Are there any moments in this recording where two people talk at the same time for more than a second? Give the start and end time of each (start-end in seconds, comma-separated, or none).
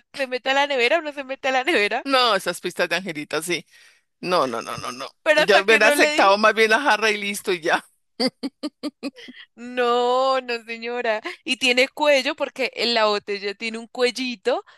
5.2-6.5